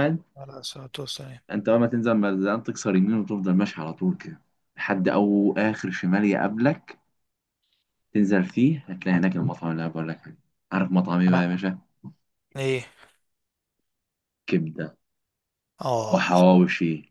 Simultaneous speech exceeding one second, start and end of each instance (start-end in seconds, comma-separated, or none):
none